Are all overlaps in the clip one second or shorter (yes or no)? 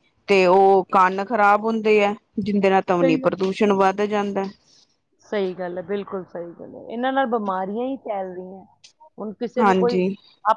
yes